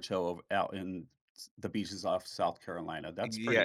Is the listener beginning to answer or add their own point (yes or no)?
yes